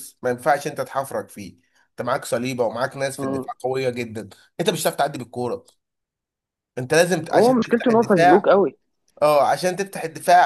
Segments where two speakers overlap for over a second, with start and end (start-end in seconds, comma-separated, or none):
7.3-8.5